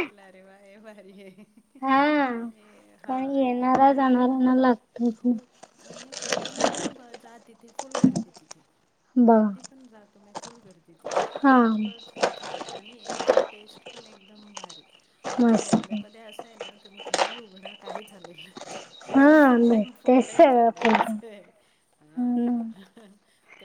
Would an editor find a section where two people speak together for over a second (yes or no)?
yes